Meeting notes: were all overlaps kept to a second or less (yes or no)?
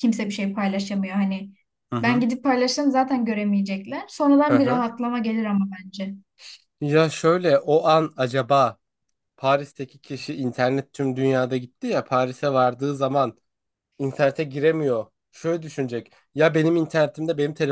yes